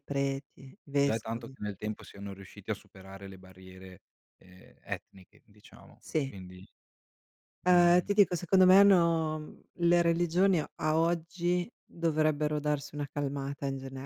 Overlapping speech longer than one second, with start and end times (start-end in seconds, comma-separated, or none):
none